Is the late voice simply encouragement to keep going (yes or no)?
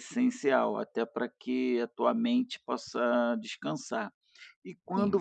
yes